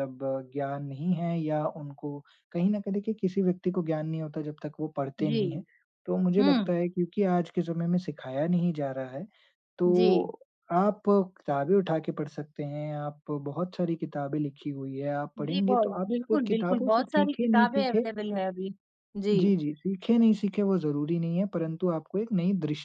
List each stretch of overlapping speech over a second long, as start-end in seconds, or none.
15.4-18.1